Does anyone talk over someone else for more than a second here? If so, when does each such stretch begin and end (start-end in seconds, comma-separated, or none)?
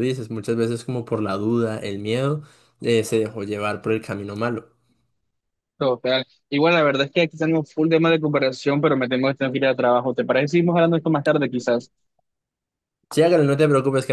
none